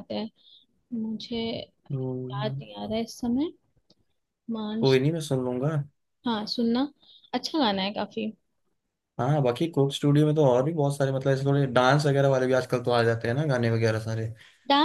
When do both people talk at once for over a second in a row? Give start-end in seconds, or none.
none